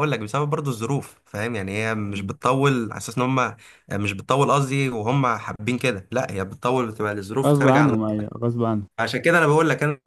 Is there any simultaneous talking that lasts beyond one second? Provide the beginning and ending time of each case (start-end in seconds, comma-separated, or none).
none